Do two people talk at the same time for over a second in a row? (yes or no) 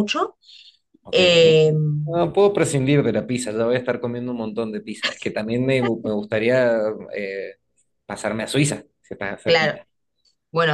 no